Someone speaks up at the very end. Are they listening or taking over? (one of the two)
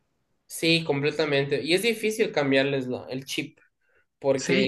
taking over